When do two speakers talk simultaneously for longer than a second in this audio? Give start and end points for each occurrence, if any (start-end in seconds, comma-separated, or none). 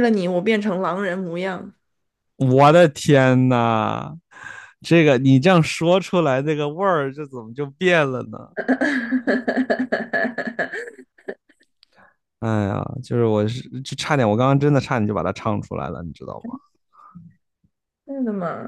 none